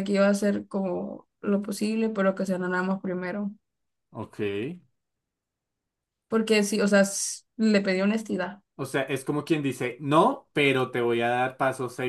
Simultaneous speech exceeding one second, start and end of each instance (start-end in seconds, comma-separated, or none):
none